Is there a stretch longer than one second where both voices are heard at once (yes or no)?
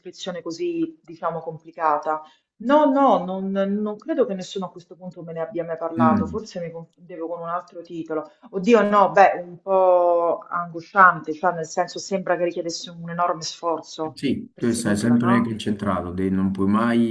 yes